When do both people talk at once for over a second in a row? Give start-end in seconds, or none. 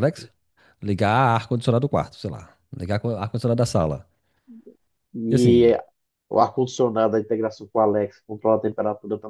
none